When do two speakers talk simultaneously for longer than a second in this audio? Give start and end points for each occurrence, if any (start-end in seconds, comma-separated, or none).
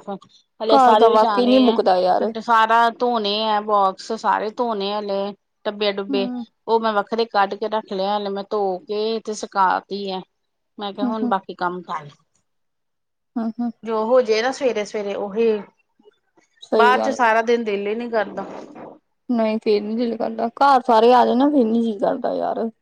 0.7-2.2